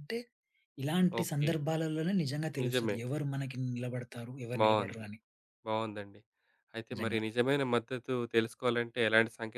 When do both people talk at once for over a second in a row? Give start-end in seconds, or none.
none